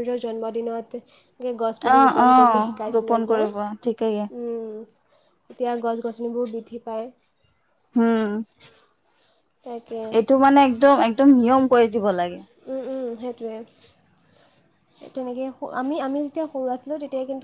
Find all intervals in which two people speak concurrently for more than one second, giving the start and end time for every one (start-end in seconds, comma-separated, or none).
1.9-4.2